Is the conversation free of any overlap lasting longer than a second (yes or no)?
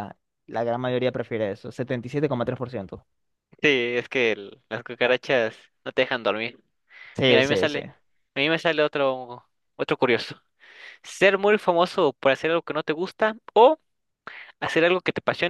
yes